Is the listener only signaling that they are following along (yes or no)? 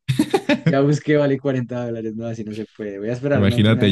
no